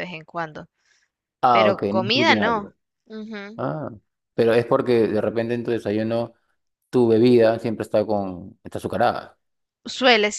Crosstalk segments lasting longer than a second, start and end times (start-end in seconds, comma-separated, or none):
1.5-2.7